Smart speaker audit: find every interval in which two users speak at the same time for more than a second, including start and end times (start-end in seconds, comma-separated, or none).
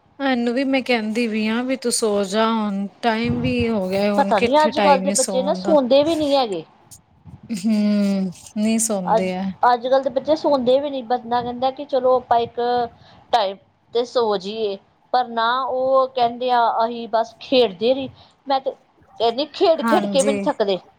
4.2-5.8